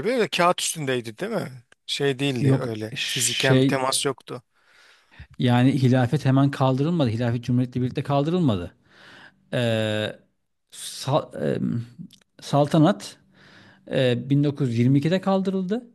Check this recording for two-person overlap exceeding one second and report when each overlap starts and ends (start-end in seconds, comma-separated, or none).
2.4-3.9